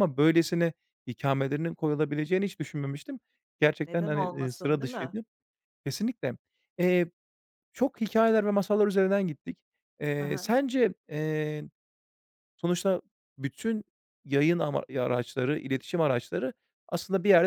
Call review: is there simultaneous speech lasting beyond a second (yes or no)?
yes